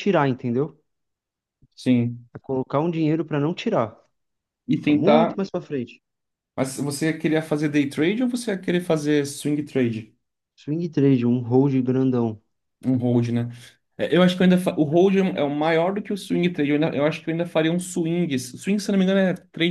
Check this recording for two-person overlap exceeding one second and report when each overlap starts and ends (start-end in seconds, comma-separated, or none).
none